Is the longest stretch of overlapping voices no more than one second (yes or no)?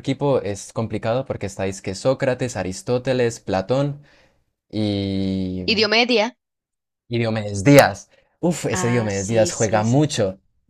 no